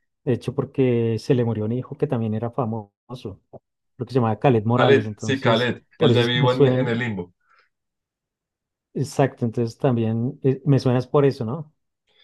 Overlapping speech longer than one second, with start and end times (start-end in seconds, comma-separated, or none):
4.8-7.0